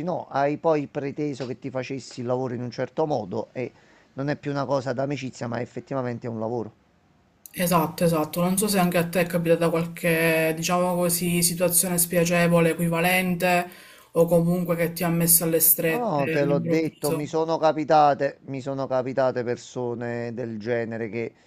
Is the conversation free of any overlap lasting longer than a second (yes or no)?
no